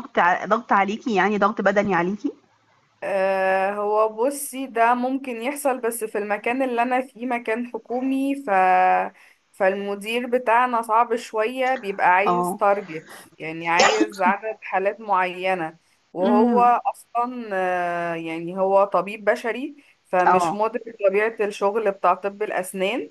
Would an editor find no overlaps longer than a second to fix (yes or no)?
yes